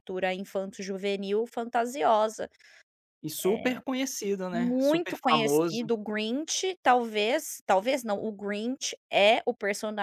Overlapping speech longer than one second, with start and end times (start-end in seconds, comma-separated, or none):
4.5-5.9